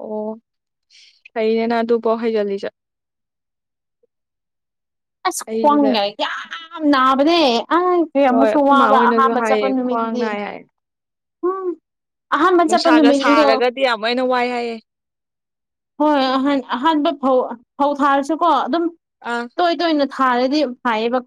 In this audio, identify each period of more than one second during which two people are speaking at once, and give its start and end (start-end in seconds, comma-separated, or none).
8.2-10.2